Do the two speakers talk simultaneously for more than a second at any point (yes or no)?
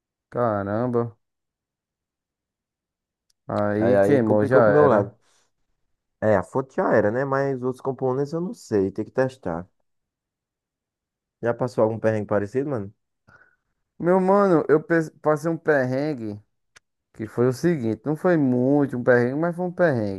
yes